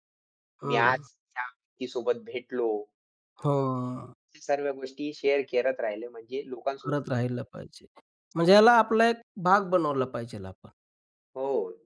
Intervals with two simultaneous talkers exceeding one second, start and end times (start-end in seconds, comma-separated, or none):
none